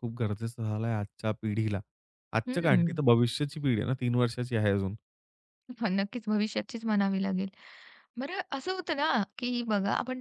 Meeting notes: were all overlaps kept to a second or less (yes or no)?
yes